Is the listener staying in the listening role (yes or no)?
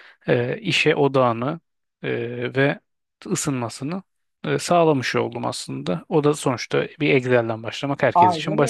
no